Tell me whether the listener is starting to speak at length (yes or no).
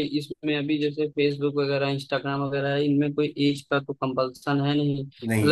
no